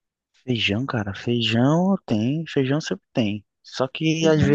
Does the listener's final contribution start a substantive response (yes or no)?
no